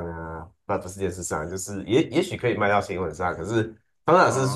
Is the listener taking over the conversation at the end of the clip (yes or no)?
no